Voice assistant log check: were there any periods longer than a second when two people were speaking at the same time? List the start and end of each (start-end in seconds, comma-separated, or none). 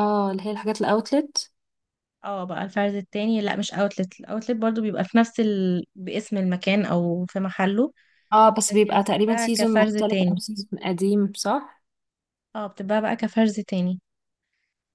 8.7-10.4